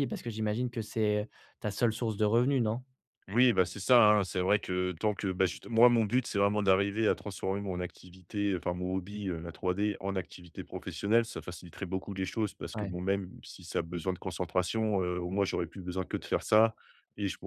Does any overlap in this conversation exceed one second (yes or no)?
no